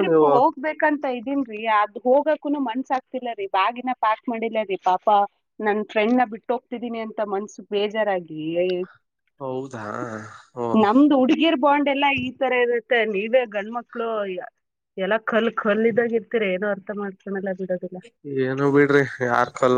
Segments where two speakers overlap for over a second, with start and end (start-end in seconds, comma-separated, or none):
none